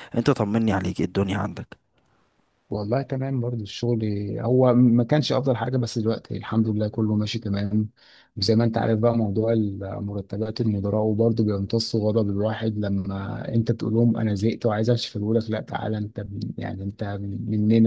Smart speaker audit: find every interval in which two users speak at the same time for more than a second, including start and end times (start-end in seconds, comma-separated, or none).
none